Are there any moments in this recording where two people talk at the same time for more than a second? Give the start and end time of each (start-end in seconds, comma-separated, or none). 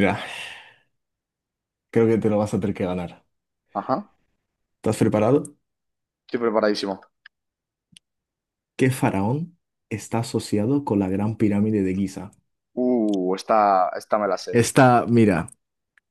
none